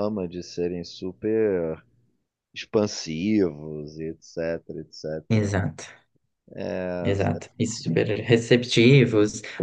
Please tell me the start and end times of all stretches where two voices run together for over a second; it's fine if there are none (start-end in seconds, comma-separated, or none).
none